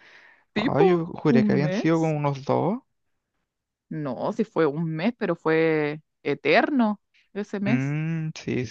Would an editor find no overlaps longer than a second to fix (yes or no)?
no